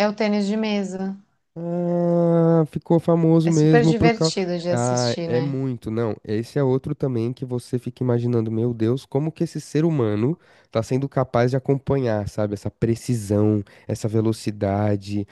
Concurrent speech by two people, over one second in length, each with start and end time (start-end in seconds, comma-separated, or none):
3.4-5.6